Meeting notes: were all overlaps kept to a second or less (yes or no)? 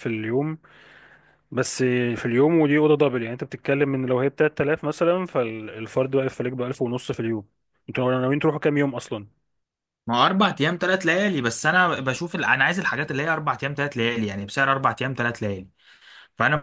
yes